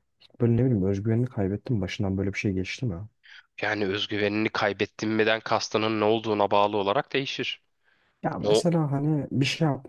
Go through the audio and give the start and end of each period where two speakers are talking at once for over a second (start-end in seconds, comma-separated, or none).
none